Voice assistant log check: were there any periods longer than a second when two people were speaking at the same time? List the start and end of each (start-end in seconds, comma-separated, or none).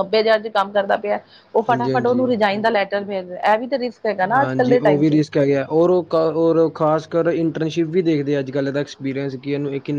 none